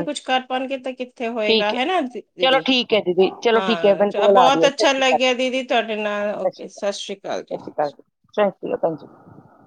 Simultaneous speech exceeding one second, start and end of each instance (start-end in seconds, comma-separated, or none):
3.5-5.3